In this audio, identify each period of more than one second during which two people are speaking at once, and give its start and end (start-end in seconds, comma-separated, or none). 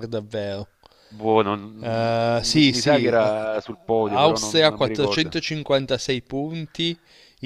1.8-3.3, 4.0-5.4